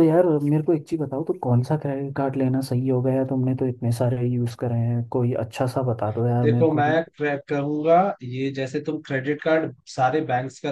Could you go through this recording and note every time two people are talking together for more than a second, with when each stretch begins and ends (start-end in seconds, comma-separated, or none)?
none